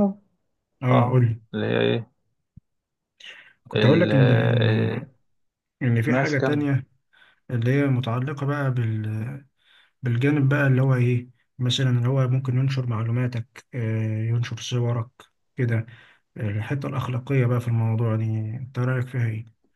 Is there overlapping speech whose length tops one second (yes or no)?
yes